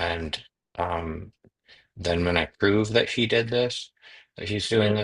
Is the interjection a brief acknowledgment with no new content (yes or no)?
yes